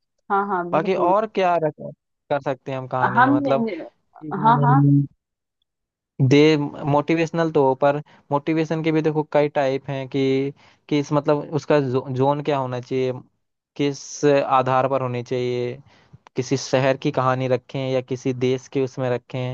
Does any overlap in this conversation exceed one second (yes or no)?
no